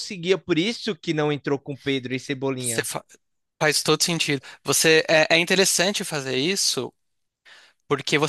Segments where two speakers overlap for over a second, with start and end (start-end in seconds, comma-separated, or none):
none